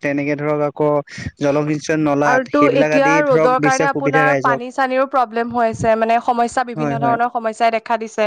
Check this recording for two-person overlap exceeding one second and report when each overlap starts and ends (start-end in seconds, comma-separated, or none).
2.3-5.7